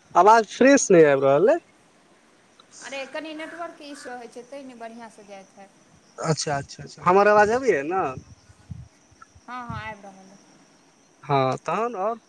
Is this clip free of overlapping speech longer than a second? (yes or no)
yes